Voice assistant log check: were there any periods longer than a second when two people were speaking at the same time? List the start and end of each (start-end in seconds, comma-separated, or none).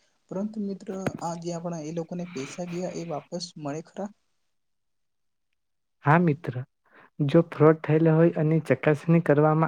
none